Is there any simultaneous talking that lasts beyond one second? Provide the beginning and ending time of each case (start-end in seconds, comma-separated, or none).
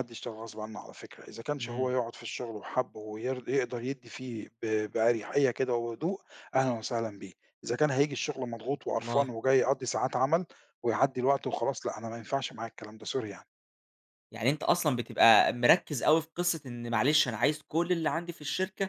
none